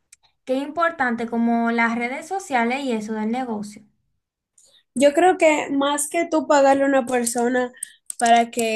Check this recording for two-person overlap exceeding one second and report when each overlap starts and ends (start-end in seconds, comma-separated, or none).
none